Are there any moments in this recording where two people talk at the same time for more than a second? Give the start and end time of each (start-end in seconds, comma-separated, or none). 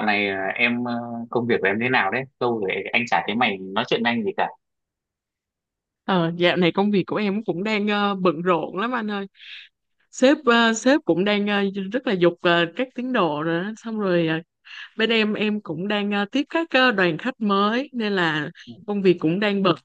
none